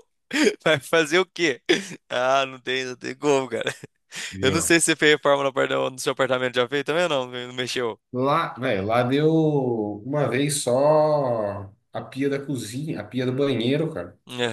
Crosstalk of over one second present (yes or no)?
no